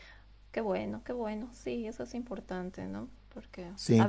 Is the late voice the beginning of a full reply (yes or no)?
no